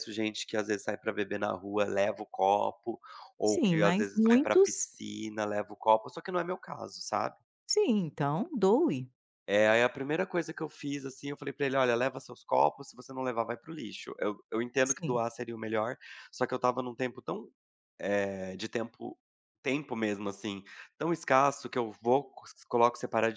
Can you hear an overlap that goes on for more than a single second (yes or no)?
yes